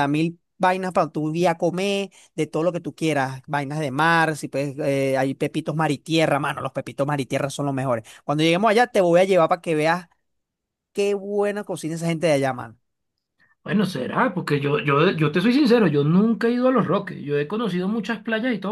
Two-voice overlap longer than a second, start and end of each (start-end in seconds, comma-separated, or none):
none